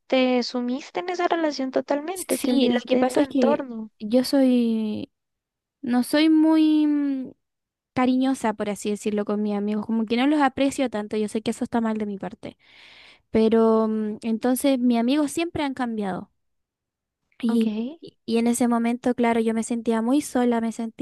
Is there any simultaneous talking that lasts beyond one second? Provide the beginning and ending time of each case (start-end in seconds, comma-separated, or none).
2.1-3.9